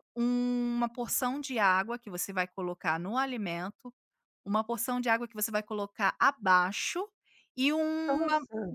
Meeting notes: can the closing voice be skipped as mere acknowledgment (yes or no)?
yes